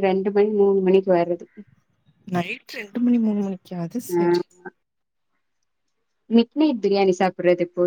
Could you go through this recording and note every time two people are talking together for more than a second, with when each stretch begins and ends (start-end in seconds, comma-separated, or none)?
none